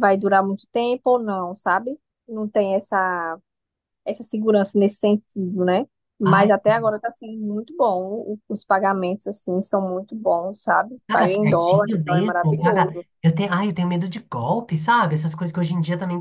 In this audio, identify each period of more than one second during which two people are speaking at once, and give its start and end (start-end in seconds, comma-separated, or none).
11.1-13.0